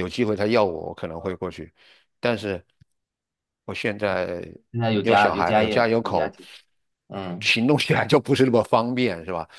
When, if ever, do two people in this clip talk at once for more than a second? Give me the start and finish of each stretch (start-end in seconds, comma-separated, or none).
5.0-6.3